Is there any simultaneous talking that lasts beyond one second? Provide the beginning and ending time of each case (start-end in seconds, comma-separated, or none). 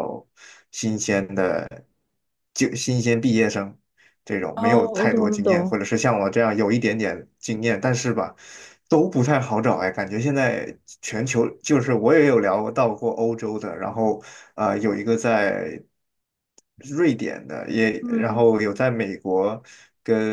4.6-5.8